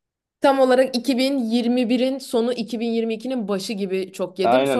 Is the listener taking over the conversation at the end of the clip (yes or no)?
yes